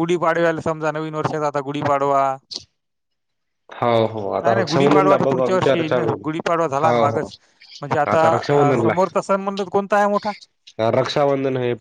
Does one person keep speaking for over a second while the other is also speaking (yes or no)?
yes